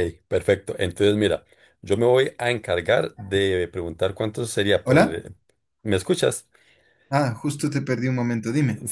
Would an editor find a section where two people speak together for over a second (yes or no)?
no